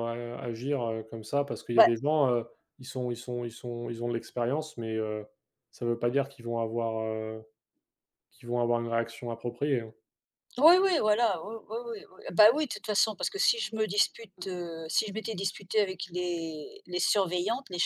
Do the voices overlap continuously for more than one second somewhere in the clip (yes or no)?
no